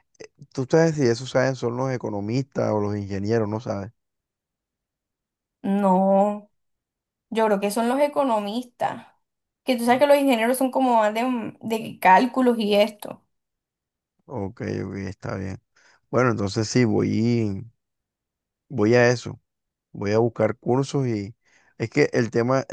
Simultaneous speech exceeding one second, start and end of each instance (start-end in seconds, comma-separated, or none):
none